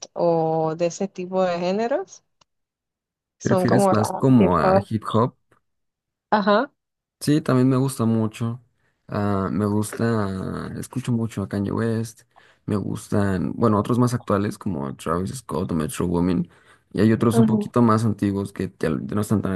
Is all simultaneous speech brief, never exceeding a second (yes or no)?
no